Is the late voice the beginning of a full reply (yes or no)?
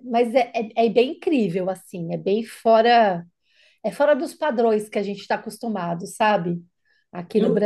yes